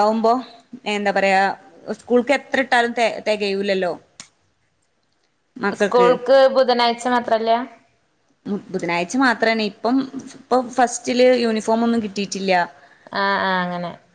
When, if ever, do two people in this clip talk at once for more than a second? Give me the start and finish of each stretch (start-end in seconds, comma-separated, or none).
none